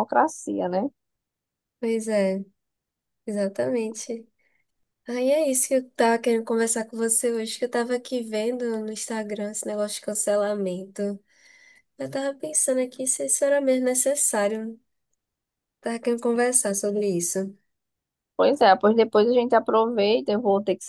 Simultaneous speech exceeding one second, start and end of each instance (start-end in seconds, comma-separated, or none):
none